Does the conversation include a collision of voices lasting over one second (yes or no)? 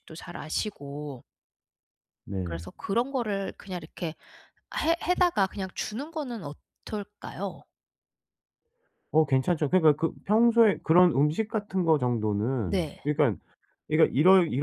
no